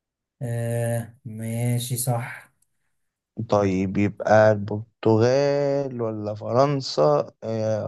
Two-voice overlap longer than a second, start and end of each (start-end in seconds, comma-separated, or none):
none